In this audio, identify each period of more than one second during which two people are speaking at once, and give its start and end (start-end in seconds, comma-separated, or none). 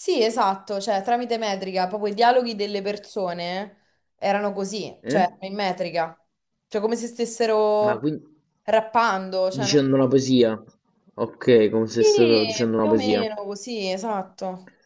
12.0-13.3